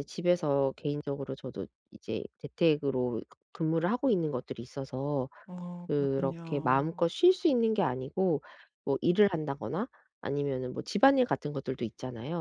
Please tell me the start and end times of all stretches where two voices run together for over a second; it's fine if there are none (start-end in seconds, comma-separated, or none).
5.9-7.1